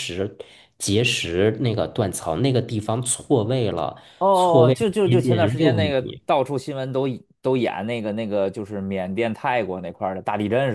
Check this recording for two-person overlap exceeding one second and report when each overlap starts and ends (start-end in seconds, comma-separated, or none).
4.7-6.2